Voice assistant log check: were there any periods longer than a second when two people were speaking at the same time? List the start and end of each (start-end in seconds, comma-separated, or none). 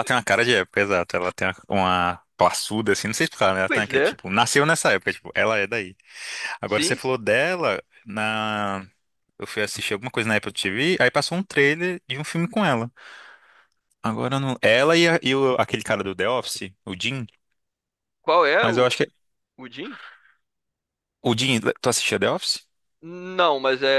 none